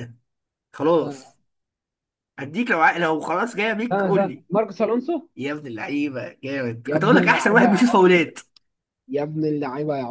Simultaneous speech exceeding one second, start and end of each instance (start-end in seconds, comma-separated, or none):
6.8-8.2